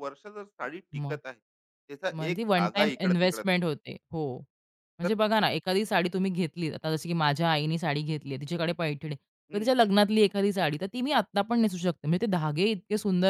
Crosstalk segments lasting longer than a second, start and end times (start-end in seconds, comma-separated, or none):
2.2-3.5